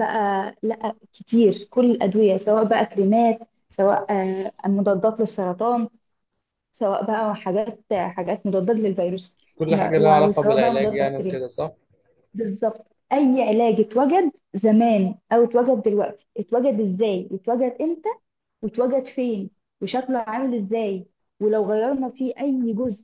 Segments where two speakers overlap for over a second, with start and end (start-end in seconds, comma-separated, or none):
9.6-11.4